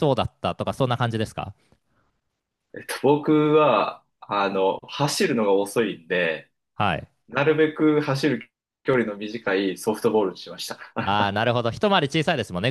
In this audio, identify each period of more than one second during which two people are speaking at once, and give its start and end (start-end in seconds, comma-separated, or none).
none